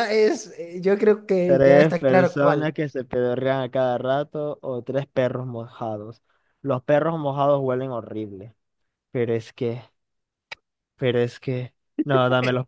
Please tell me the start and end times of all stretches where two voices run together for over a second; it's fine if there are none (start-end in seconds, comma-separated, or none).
1.4-2.7